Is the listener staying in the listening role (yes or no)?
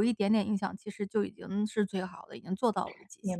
no